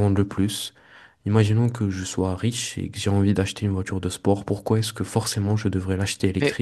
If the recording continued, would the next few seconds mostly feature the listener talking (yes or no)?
yes